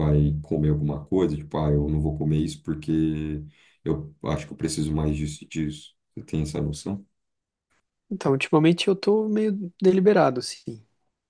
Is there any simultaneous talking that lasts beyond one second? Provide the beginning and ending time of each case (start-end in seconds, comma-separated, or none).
none